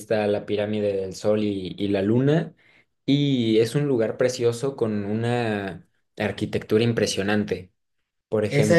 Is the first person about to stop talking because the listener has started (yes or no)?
yes